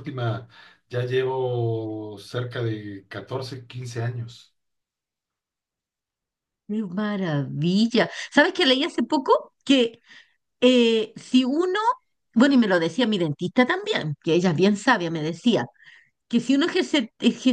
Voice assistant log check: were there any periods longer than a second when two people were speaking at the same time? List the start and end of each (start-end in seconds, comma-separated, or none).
none